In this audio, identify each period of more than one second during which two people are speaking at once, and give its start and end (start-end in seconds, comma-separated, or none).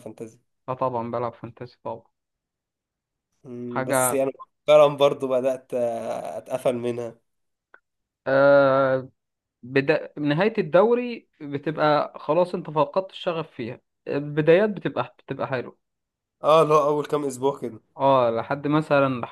none